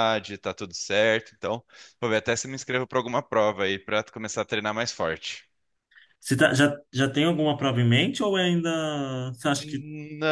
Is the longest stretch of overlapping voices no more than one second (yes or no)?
yes